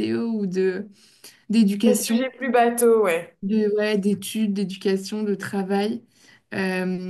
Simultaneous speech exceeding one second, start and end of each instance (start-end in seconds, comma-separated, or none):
none